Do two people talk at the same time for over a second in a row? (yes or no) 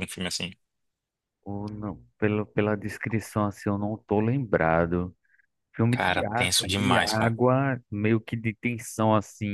yes